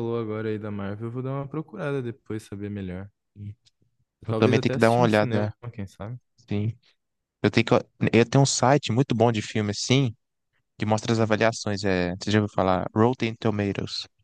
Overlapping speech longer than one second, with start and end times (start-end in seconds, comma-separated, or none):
4.3-5.5